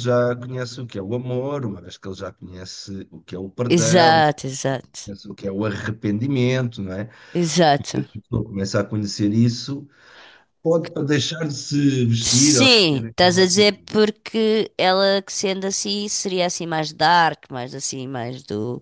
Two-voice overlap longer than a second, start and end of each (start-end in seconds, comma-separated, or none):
12.2-13.9